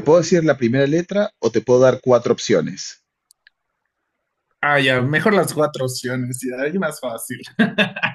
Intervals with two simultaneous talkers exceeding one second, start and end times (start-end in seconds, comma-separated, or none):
none